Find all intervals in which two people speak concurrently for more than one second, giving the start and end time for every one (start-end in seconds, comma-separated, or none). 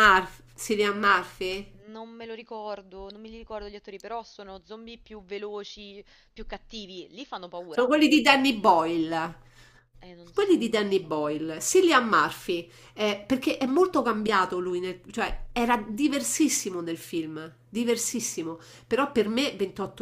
none